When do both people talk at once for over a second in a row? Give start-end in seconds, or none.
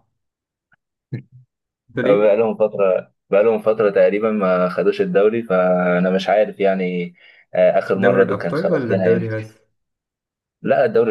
8.0-9.3